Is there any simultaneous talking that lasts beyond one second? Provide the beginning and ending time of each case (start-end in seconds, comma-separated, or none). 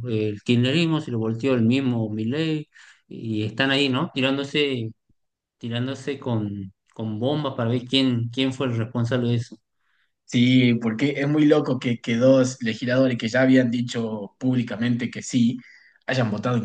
none